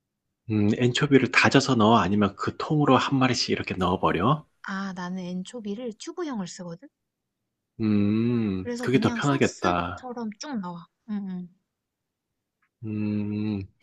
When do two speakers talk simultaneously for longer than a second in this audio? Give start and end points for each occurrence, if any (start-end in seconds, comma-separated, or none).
8.6-10.1